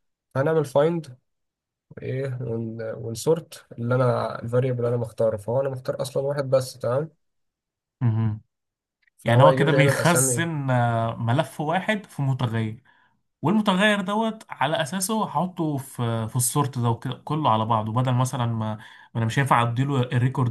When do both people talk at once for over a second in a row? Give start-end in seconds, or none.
9.2-10.5